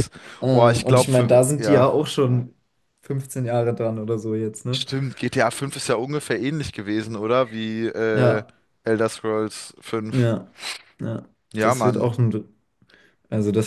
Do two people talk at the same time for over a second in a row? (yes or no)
yes